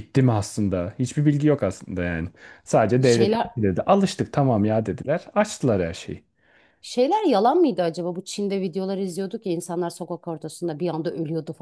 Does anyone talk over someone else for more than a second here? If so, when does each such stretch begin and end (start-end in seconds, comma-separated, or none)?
none